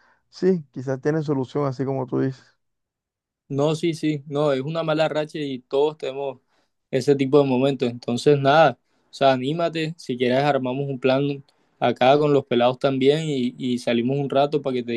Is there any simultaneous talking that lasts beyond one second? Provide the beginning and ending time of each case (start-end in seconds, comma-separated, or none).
none